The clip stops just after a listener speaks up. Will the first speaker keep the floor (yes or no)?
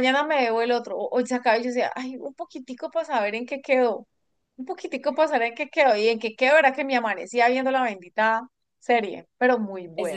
no